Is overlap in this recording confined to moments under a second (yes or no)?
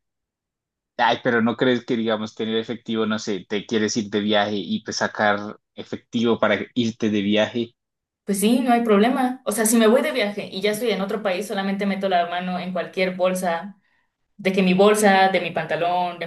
yes